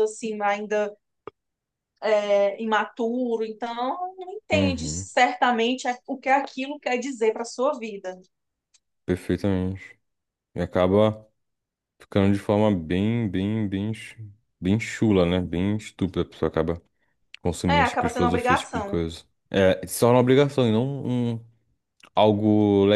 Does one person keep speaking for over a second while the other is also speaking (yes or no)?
yes